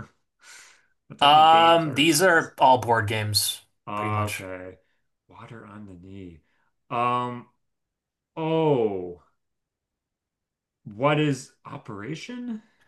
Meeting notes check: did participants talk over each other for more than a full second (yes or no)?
yes